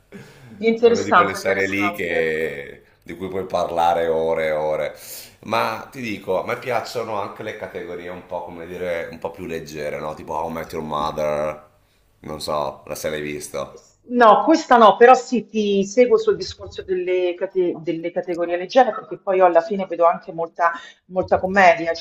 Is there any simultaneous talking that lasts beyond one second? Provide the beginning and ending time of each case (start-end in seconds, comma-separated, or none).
0.8-2.3